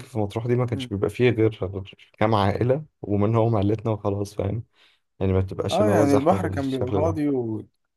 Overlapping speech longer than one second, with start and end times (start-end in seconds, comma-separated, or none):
5.7-7.2